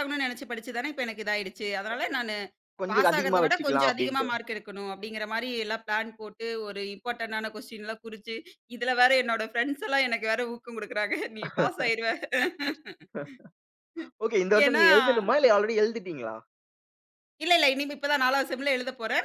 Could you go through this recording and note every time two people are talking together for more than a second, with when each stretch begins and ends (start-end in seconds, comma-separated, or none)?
2.9-4.3